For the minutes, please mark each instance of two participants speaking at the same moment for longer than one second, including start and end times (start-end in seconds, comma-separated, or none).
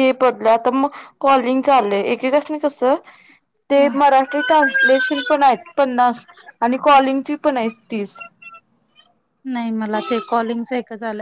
none